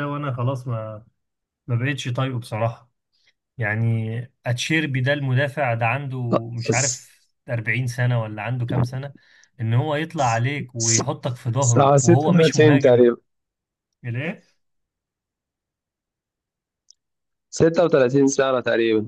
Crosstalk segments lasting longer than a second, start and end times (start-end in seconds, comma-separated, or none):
11.6-13.1